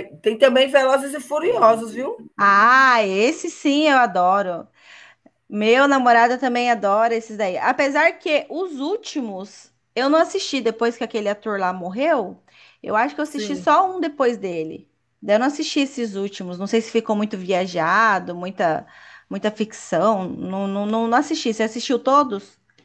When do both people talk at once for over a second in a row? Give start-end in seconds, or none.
none